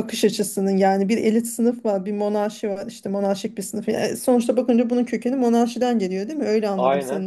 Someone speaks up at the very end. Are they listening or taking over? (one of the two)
listening